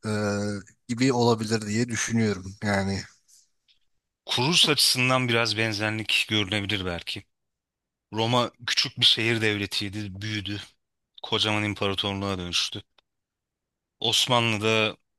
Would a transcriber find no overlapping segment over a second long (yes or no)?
yes